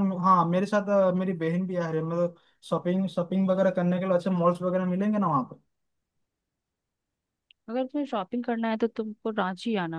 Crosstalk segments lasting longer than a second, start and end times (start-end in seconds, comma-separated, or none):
none